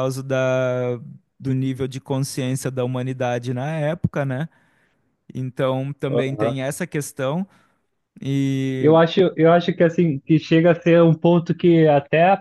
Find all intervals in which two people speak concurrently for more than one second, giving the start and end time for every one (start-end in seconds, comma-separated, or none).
none